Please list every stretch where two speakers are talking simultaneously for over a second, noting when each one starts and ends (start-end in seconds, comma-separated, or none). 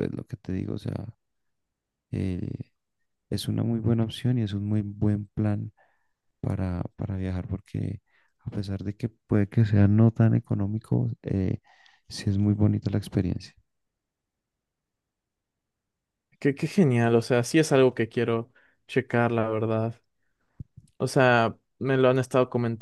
none